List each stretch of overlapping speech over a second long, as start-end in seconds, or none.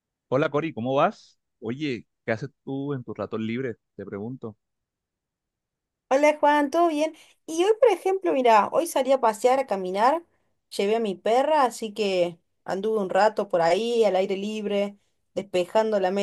none